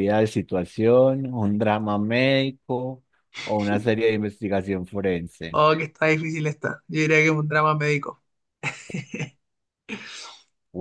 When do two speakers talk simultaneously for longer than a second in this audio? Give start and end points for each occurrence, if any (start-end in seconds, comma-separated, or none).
none